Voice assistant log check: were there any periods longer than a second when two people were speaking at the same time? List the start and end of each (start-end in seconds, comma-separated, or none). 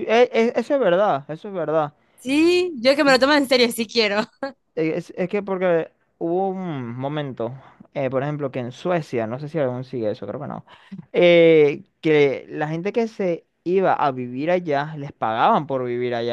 none